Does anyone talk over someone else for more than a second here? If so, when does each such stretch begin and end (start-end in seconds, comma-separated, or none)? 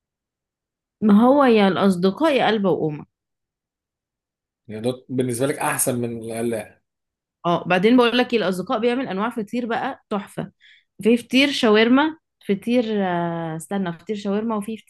none